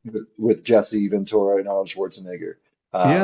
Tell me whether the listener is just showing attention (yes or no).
no